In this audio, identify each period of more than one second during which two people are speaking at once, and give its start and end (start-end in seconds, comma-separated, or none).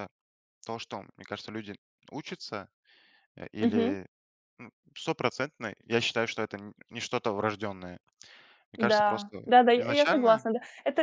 8.8-10.5